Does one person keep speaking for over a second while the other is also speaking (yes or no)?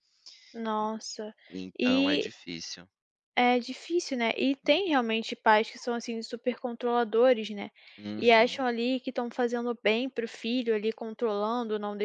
no